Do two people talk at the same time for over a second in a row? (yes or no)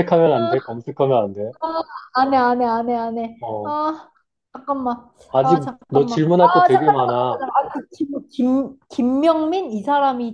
yes